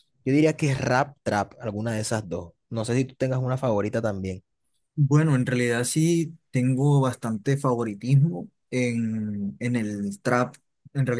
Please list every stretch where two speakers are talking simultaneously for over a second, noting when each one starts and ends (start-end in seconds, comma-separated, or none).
none